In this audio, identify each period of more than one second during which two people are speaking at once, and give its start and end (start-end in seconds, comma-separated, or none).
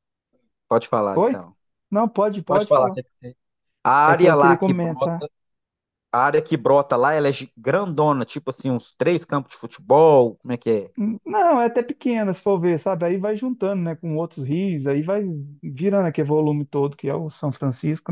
4.1-5.3